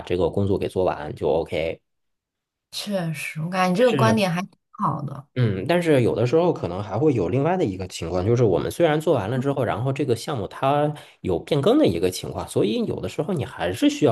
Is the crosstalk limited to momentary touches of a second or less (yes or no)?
yes